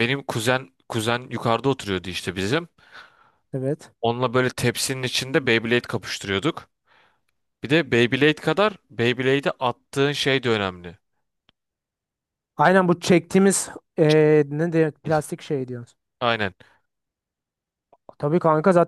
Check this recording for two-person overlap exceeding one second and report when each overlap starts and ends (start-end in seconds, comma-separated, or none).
none